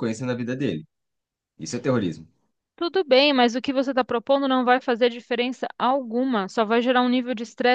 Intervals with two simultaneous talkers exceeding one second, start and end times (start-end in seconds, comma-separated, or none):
none